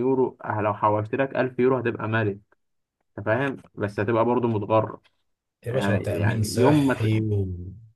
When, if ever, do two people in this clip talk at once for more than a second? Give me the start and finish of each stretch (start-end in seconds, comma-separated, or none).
5.7-7.1